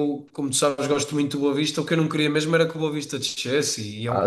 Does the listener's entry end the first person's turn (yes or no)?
yes